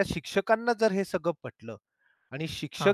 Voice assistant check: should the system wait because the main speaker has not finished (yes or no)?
yes